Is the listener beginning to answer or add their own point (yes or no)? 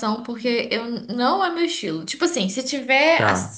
no